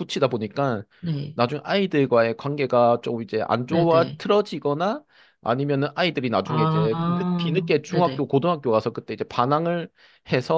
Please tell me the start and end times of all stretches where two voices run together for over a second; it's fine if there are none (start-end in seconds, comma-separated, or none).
6.4-8.3